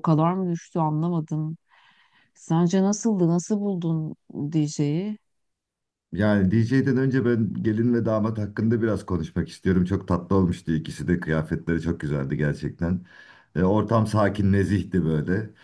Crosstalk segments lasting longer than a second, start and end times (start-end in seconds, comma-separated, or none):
none